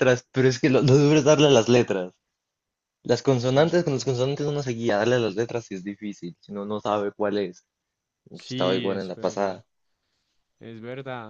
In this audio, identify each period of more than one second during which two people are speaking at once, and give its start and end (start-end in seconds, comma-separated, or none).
8.3-9.6